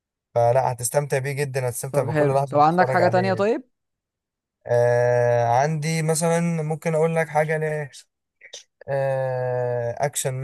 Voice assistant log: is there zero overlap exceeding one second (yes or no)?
no